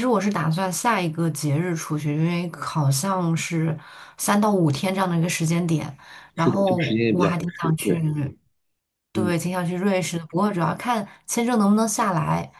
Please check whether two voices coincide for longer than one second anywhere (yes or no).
yes